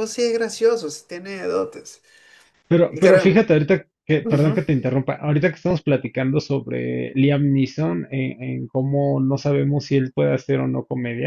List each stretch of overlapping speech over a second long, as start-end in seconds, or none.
none